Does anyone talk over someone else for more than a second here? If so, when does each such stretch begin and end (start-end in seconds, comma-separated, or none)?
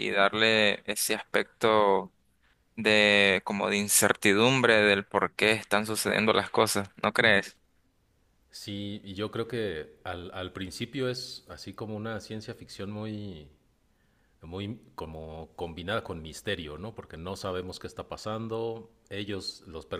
none